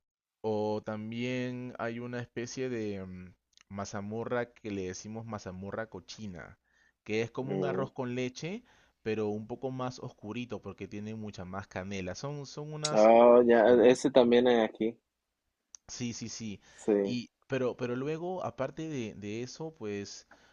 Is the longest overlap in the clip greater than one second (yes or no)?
no